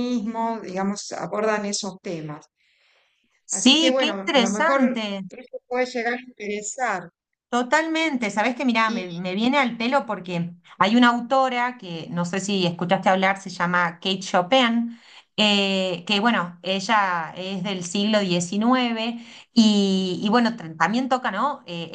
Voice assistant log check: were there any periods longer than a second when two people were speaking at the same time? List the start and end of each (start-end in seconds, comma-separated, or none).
3.5-5.2